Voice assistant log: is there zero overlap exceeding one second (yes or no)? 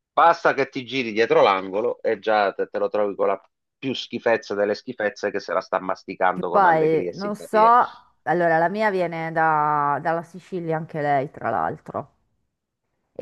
no